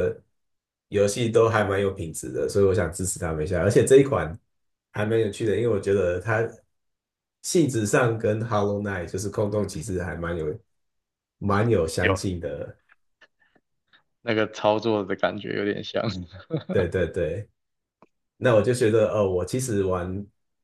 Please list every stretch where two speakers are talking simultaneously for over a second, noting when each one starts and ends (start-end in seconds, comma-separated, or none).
none